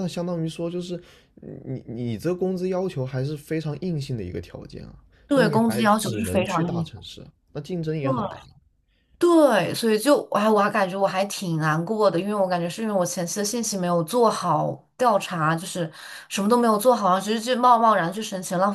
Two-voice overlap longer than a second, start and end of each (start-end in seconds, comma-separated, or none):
5.3-6.9